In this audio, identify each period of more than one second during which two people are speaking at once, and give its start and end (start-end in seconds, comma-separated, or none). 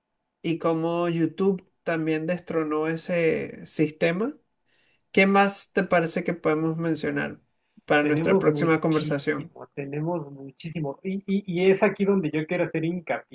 8.0-9.6